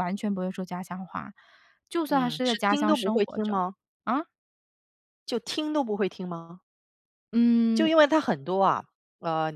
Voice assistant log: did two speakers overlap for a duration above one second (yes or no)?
yes